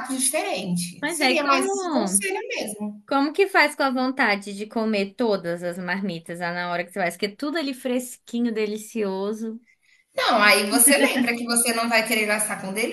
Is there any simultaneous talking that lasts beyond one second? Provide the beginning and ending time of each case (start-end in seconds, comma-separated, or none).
1.0-2.2